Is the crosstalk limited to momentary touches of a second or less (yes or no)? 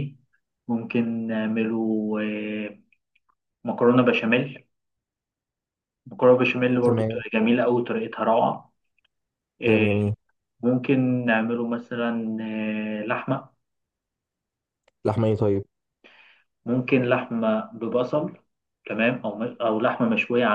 yes